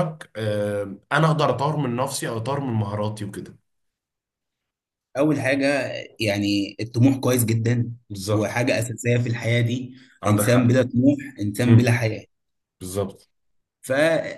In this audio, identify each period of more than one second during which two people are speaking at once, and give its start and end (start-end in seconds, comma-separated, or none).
none